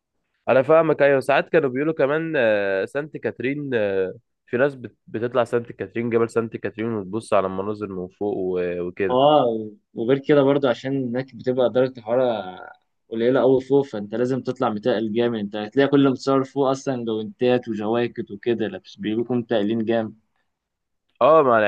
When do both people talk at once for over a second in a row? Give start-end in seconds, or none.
none